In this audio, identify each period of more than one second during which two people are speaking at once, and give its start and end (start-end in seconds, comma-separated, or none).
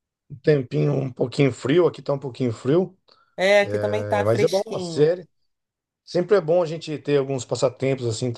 3.6-5.1